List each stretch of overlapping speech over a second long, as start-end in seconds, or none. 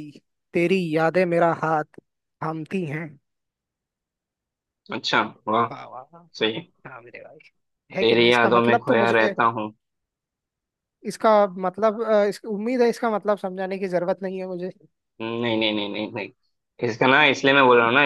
8.0-9.3